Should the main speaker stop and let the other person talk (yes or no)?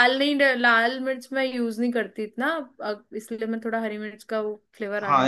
yes